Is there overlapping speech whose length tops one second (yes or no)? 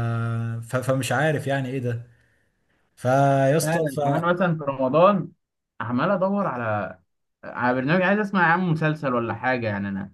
no